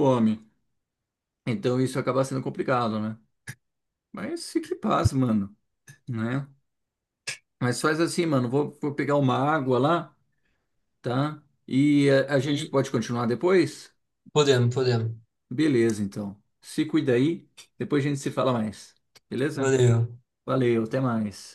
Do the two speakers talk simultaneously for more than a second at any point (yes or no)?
no